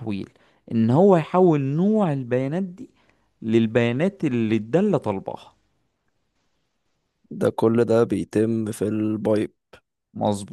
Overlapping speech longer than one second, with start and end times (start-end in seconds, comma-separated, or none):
none